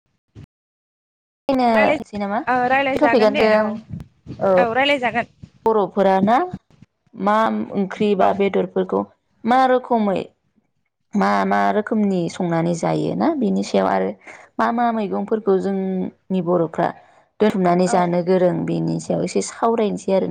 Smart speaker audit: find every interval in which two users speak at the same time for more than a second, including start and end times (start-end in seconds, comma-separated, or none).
1.8-3.5